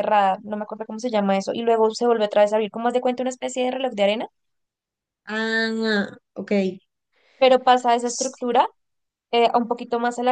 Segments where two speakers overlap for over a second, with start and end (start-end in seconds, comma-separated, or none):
none